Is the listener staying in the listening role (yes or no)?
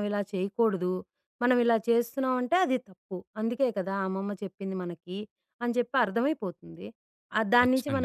yes